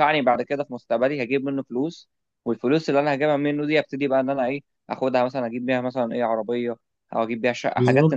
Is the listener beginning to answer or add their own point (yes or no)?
yes